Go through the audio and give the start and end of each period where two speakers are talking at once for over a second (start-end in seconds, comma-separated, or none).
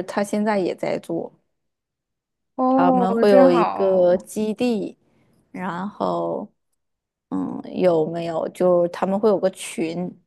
2.7-4.2